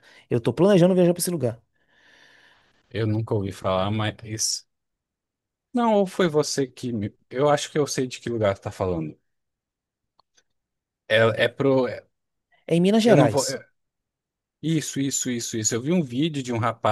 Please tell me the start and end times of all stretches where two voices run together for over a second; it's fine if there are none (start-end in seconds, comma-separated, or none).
none